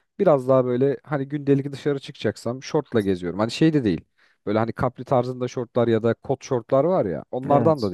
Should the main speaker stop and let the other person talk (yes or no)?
no